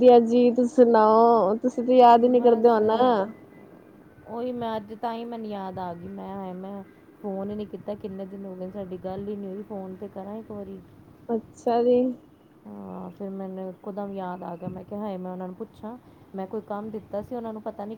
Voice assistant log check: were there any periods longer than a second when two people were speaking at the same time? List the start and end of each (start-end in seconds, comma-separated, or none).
none